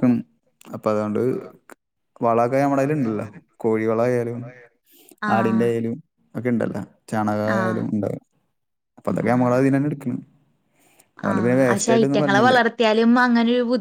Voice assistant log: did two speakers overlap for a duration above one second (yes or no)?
no